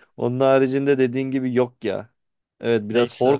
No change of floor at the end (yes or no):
yes